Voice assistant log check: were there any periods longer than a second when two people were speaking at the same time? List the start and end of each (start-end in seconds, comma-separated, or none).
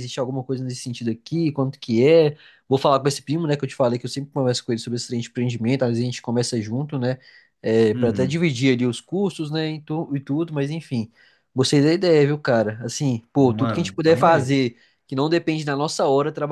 13.3-14.6